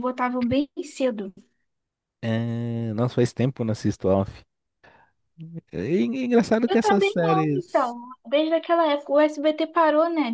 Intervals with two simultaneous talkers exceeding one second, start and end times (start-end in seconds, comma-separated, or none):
6.7-8.0